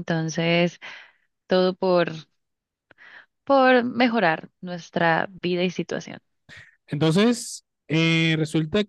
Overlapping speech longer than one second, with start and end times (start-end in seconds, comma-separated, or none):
none